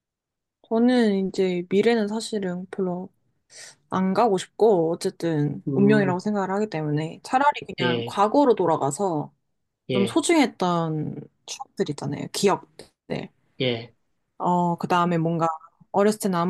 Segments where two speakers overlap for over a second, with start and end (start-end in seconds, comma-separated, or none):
none